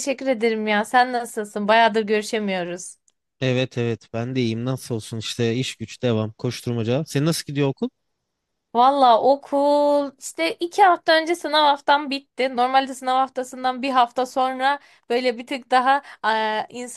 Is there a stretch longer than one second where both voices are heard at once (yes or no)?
no